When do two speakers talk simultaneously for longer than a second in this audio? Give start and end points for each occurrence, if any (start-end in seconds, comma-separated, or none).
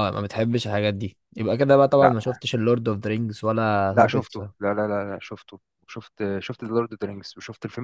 none